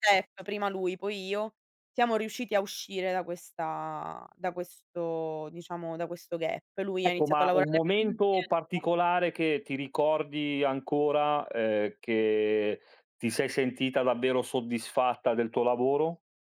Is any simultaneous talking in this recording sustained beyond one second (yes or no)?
yes